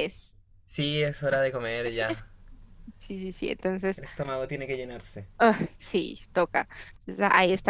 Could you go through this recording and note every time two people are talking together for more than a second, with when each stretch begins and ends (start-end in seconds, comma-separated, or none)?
none